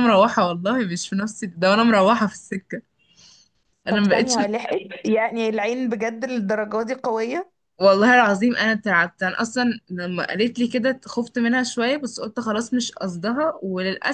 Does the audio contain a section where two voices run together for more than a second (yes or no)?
no